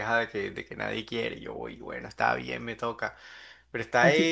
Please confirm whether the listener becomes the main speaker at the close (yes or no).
yes